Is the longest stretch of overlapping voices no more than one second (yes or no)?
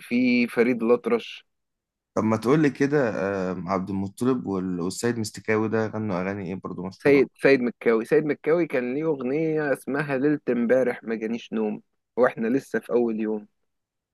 yes